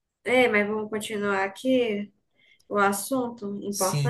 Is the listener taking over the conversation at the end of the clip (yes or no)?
yes